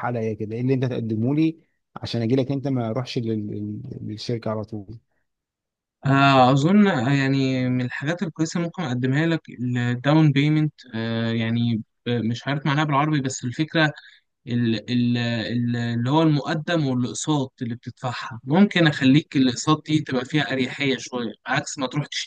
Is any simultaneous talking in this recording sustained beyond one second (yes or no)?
no